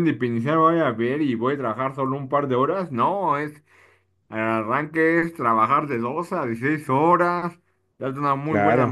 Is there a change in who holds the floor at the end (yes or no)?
no